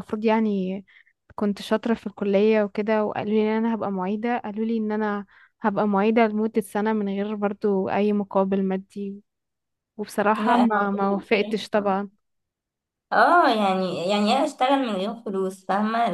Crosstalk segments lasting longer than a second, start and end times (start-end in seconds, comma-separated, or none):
10.3-12.0